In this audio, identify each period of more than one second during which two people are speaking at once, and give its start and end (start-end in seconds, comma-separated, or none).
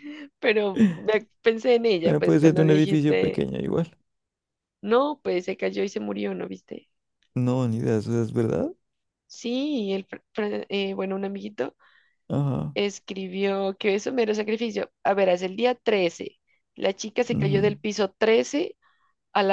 2.0-3.4